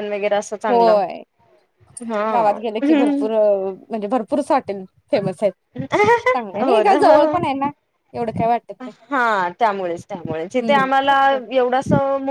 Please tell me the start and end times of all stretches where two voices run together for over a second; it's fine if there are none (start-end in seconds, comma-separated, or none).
none